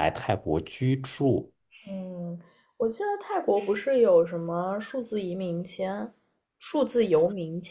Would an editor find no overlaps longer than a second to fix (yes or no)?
yes